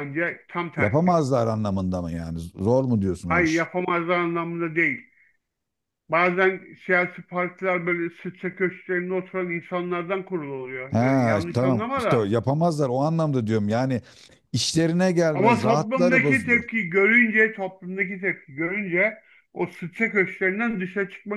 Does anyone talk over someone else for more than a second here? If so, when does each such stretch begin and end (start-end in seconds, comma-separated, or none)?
10.9-12.3, 15.3-16.6